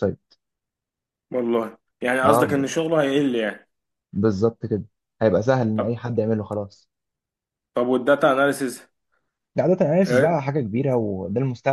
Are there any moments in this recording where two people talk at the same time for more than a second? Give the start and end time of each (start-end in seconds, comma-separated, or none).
none